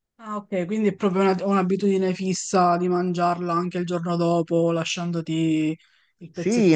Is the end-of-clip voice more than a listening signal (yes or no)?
yes